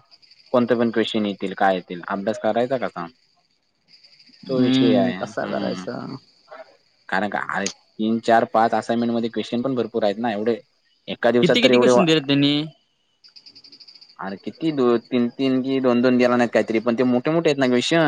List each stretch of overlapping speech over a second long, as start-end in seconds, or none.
4.6-5.8